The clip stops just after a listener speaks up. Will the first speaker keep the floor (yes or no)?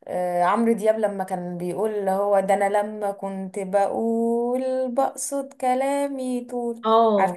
no